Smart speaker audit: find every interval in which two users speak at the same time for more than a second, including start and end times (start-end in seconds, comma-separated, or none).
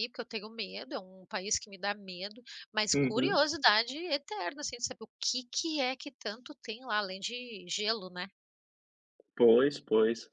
none